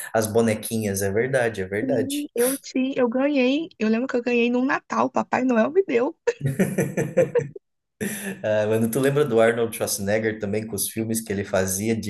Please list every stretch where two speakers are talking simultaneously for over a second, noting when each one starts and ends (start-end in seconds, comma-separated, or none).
none